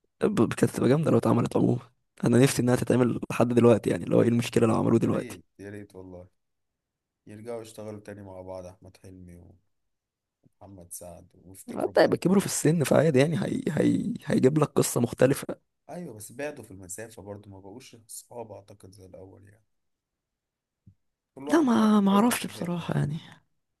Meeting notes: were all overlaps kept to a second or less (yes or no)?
no